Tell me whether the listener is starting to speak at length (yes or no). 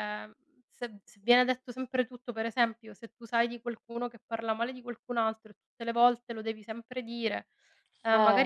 no